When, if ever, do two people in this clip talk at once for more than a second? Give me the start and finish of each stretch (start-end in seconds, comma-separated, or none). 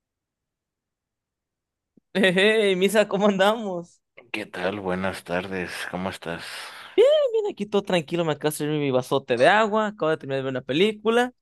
none